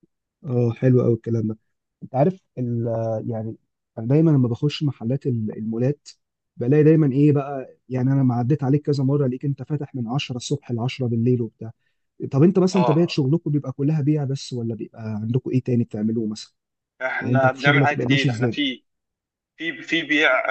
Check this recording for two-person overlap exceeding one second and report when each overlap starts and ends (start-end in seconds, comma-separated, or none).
17.2-18.6